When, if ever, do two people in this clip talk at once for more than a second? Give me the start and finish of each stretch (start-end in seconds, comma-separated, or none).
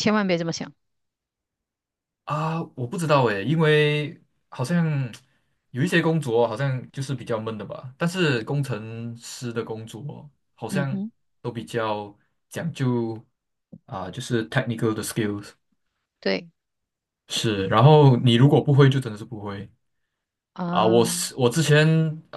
none